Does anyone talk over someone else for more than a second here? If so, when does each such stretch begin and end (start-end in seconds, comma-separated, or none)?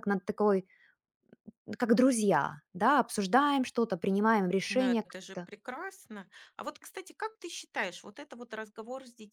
none